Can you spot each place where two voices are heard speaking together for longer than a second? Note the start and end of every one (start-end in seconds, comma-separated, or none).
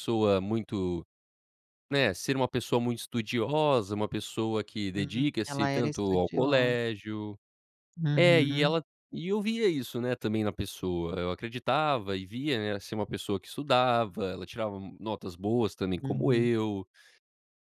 4.9-6.8